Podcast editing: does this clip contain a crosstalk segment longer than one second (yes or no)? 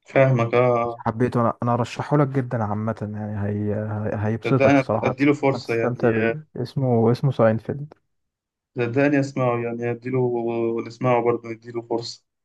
yes